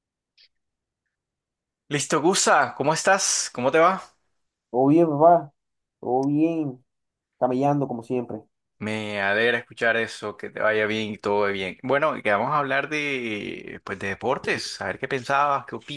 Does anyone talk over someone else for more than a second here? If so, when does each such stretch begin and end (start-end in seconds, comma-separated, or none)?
none